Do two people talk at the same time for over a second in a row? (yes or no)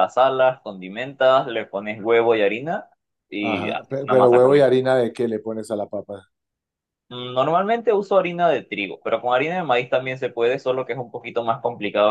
yes